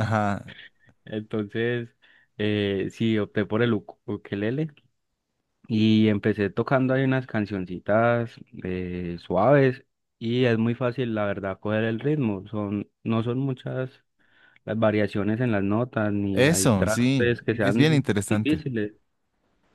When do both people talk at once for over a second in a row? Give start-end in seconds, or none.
16.3-18.6